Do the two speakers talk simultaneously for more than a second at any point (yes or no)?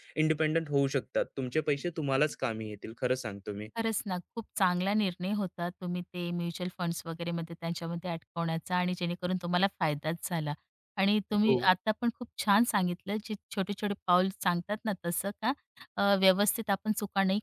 no